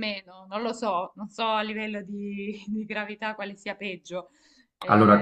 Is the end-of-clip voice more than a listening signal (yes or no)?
yes